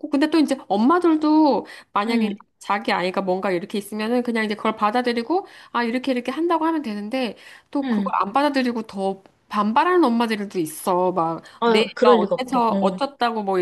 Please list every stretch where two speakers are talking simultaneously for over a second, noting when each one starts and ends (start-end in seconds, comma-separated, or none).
11.6-13.0